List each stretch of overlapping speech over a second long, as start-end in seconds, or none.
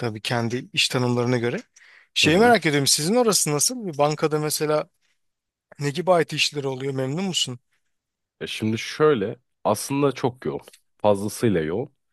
none